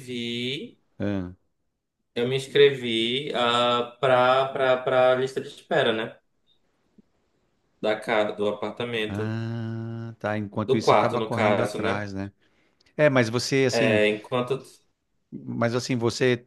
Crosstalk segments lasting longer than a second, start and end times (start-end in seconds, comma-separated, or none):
10.7-12.0